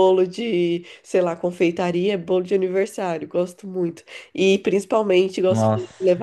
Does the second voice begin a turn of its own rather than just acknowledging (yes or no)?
no